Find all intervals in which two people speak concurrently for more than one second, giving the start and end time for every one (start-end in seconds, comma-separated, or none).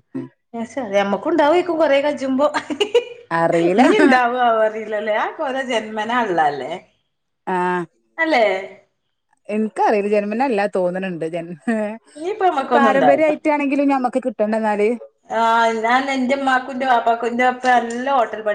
12.1-13.3